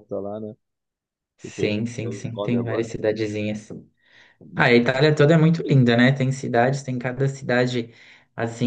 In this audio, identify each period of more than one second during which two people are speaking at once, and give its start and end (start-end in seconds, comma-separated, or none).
1.4-2.9